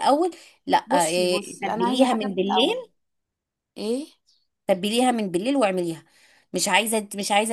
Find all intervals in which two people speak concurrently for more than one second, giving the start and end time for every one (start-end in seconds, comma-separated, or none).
0.9-2.8